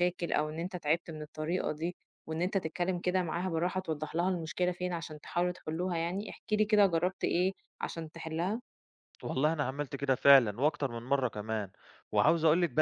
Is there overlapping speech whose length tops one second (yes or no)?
no